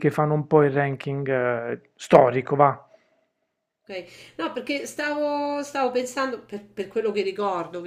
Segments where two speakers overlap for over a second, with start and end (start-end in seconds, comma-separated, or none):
none